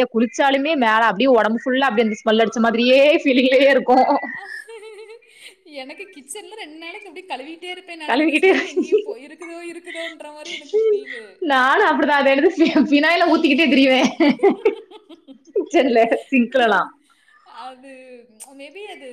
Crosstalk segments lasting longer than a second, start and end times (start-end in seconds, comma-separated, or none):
none